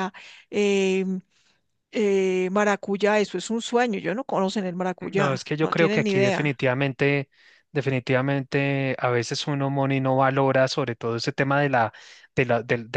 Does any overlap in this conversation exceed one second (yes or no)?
yes